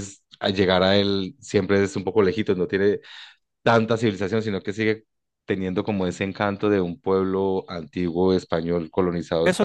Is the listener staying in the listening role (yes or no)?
no